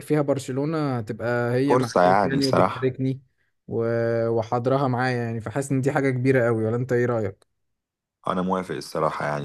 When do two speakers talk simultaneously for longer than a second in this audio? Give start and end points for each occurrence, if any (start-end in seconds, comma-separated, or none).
1.7-2.9